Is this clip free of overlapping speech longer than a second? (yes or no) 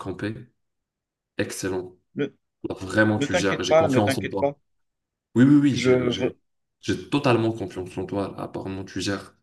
no